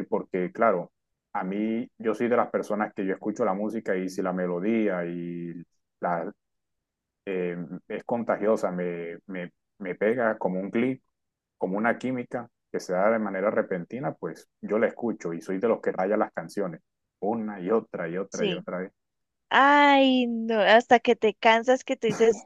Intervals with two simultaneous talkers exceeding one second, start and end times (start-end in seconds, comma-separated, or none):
none